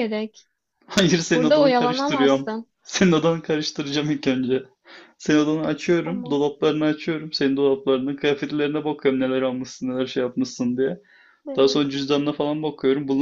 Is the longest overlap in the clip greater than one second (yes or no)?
yes